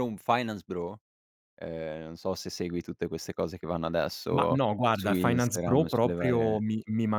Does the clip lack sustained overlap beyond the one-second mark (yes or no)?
no